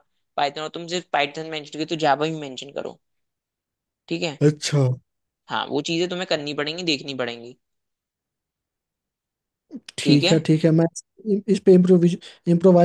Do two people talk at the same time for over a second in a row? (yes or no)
no